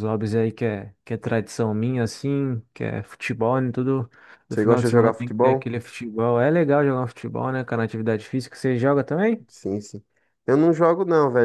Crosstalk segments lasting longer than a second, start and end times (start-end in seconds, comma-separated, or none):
4.5-5.7